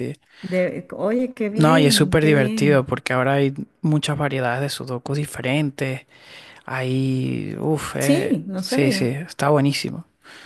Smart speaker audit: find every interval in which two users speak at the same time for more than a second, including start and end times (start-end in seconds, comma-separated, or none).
1.6-2.9